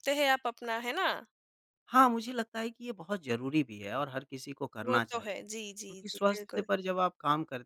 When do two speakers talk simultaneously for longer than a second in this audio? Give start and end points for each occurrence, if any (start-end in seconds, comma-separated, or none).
4.8-6.7